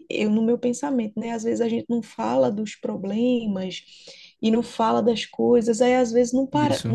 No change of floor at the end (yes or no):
yes